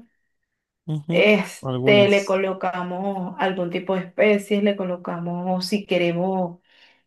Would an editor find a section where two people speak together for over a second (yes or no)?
yes